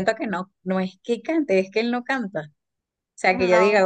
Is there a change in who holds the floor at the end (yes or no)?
no